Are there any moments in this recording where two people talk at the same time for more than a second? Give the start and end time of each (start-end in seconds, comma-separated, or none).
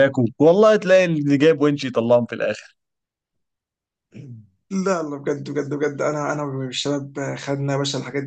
none